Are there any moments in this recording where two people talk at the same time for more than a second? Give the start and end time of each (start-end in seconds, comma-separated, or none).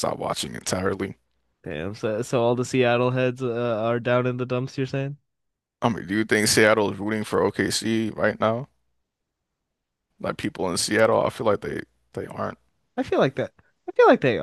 none